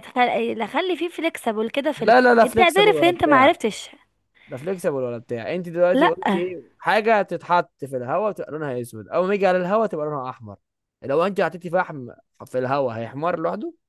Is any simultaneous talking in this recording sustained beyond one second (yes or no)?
yes